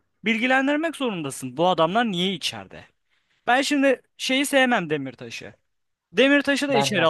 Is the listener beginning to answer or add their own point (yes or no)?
no